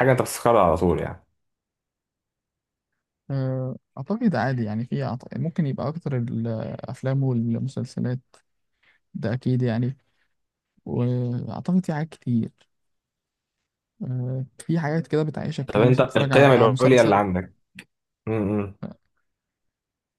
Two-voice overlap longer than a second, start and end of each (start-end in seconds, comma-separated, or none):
15.7-17.2